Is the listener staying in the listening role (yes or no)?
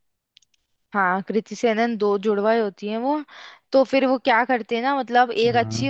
yes